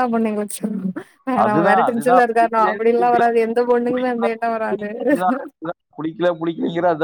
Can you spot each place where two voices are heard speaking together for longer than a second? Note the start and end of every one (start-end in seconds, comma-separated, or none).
1.4-3.2